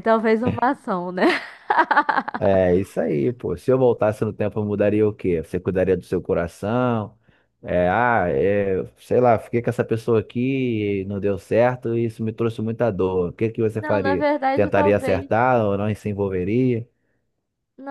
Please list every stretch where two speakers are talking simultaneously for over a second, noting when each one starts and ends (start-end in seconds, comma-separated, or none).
13.8-15.3